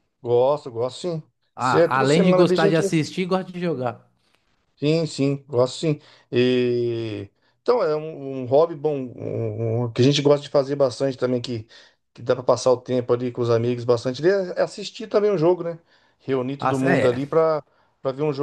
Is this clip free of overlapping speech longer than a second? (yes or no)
no